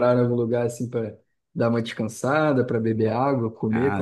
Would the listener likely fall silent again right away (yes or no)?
no